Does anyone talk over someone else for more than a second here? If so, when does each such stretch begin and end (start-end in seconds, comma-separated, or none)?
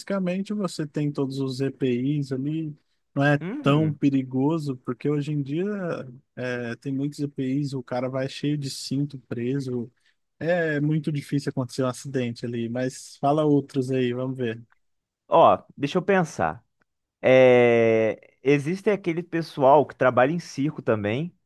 none